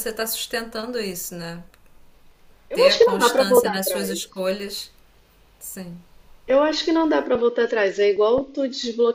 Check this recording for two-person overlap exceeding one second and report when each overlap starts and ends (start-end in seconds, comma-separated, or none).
2.7-4.2